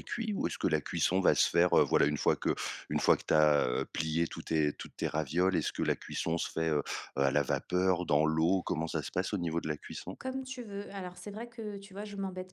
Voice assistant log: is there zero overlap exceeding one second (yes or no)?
yes